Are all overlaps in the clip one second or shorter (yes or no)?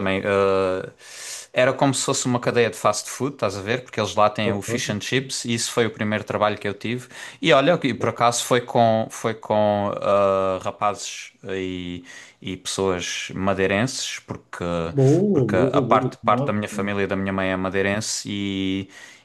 no